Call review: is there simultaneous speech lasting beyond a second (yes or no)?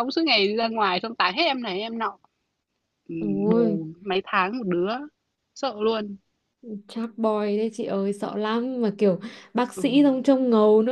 no